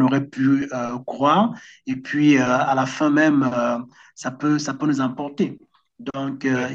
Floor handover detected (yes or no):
no